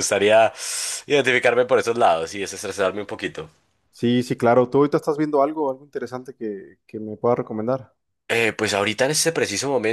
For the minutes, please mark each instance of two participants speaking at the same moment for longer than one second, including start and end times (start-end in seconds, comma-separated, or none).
none